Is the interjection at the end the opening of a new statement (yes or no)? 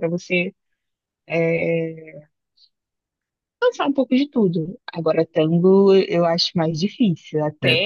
no